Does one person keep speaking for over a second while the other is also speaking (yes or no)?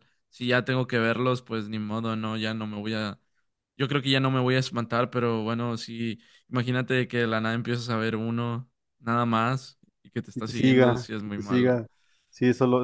yes